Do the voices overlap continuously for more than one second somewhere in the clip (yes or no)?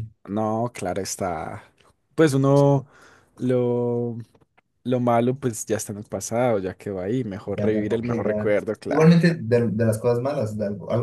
yes